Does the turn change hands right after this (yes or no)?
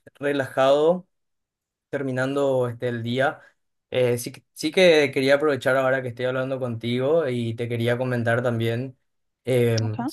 no